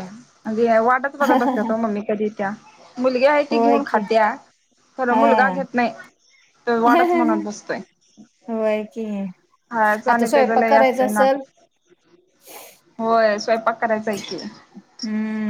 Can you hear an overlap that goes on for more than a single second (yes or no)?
yes